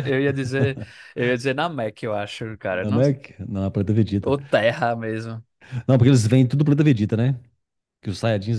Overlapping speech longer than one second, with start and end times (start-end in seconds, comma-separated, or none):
none